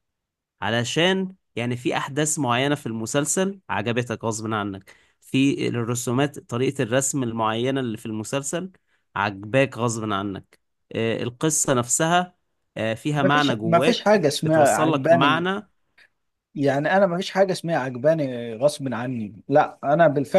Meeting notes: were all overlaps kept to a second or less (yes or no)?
no